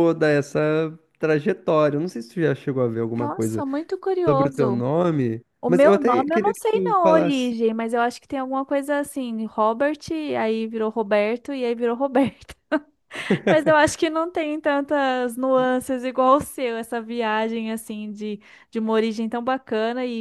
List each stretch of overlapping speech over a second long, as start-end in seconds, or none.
5.6-7.5